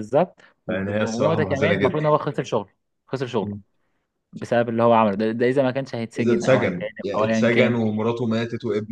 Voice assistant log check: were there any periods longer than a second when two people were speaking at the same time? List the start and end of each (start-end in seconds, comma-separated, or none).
0.7-2.0, 6.2-7.8